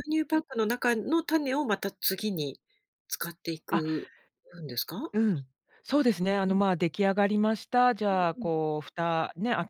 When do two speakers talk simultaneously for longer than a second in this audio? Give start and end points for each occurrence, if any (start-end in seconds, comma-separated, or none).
none